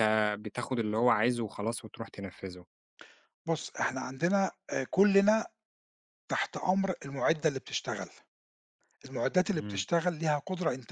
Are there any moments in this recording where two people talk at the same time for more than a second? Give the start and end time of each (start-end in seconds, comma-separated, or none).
none